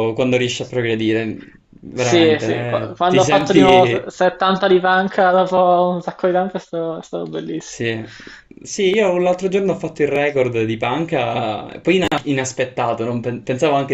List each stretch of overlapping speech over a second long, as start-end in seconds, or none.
1.9-4.1